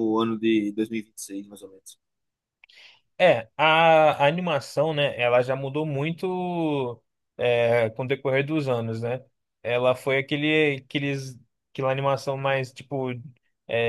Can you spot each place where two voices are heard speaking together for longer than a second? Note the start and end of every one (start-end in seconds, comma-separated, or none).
none